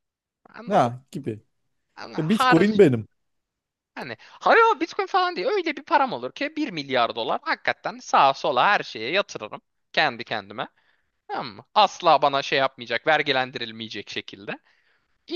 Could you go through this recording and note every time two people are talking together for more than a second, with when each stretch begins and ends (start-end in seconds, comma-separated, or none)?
none